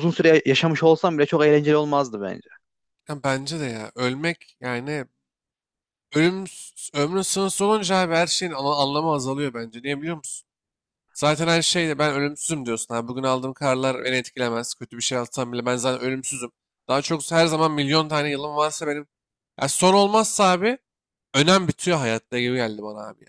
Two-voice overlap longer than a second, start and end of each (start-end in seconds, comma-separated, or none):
none